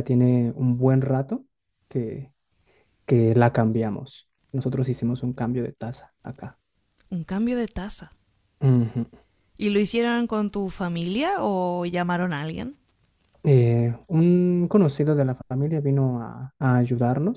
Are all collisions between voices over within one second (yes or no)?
yes